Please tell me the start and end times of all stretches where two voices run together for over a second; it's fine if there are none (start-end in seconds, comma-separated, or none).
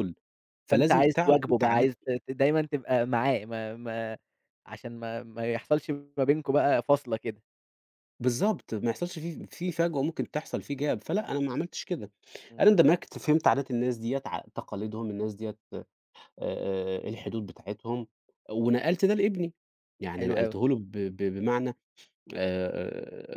0.7-2.0